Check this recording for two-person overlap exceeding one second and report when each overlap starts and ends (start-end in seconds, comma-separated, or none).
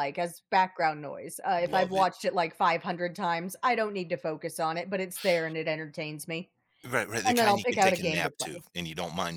7.3-8.7